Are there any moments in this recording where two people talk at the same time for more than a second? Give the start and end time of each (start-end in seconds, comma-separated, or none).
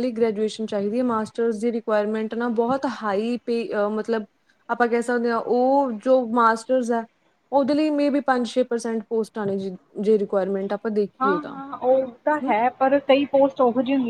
none